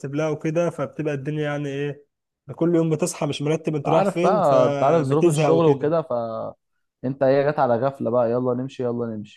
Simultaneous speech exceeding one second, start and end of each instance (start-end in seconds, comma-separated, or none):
3.9-5.9